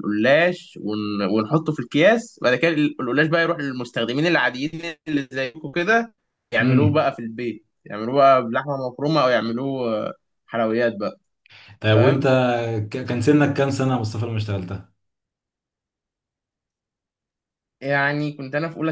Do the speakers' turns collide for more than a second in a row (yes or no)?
no